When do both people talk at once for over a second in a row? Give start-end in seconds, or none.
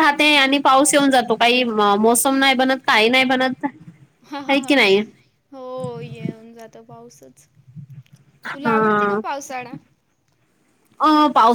none